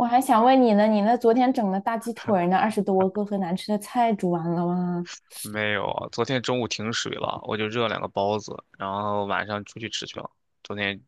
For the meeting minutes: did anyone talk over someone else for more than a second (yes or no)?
no